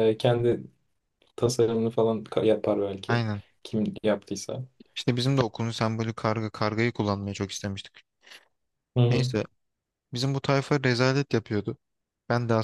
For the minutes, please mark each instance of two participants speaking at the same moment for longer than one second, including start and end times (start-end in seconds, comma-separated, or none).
none